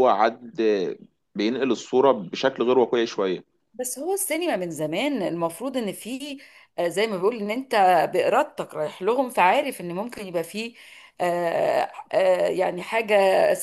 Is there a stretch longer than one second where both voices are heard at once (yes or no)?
no